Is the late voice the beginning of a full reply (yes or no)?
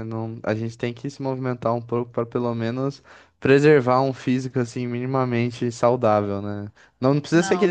no